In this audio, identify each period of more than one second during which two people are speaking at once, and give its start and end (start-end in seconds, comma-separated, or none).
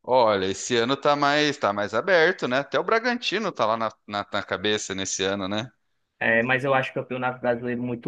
none